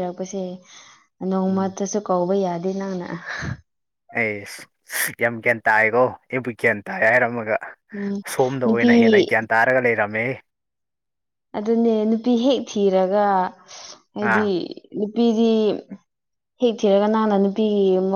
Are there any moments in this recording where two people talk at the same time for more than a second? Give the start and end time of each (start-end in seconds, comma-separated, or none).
none